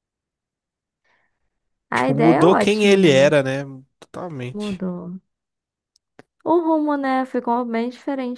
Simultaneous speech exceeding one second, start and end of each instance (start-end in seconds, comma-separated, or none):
1.9-3.3